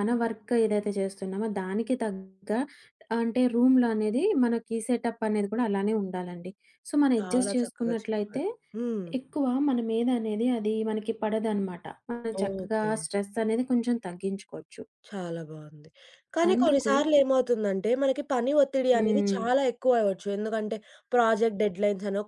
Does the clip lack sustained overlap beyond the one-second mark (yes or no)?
no